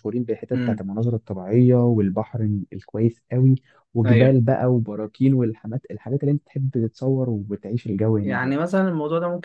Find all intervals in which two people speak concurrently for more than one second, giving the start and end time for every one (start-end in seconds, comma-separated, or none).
none